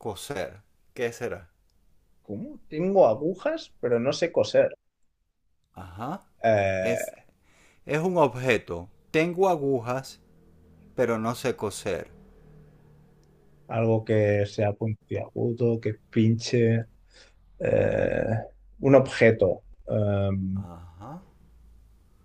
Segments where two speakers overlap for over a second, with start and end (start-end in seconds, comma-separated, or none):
none